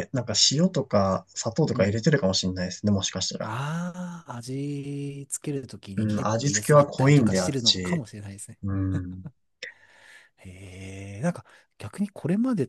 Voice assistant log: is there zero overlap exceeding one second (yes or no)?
no